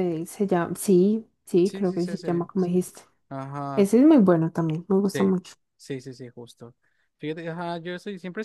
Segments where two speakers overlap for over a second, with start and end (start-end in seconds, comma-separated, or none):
1.6-2.9